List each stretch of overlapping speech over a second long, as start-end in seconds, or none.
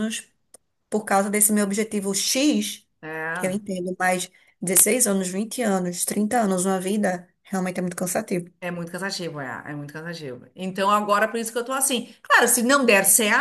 none